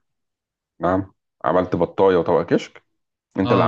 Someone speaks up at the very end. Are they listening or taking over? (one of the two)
taking over